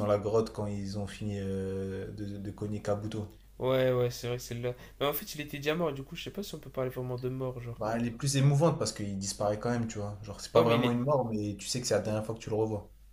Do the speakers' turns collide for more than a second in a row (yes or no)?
no